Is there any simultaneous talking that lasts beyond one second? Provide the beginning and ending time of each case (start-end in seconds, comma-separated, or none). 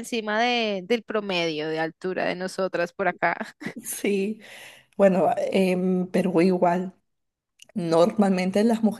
none